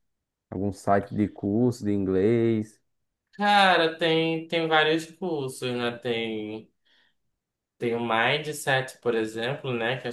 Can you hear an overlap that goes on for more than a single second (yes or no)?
no